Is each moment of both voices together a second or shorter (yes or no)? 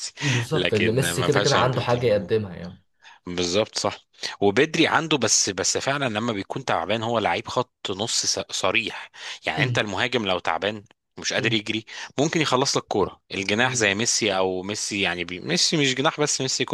no